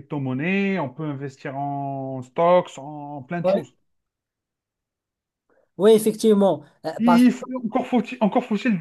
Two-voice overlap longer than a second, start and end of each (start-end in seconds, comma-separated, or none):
none